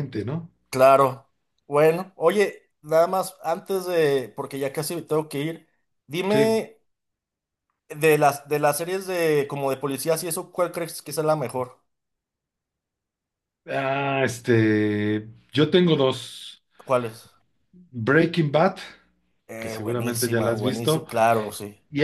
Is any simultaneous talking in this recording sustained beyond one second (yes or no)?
yes